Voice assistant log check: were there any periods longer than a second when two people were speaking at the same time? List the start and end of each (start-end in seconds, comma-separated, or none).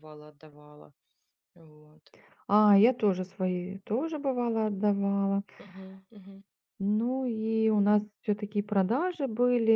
none